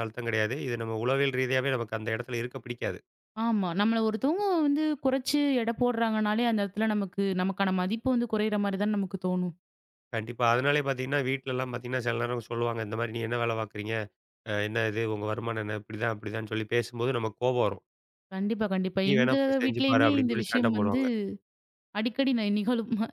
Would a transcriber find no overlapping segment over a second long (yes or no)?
no